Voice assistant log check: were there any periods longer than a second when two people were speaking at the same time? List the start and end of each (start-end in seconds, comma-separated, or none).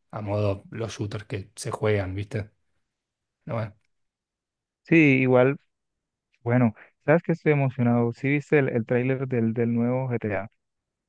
none